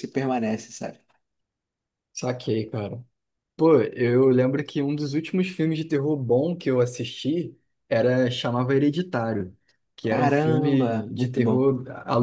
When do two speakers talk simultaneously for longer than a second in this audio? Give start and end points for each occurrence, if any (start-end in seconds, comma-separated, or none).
10.1-11.7